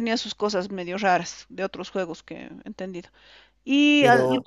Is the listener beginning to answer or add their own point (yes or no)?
no